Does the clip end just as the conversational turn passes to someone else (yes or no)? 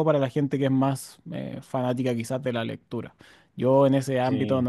no